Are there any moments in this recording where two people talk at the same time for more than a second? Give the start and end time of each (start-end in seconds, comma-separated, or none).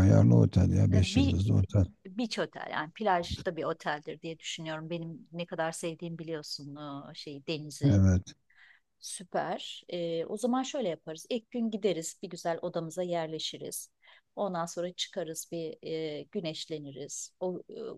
none